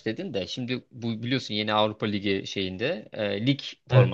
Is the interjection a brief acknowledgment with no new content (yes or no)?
yes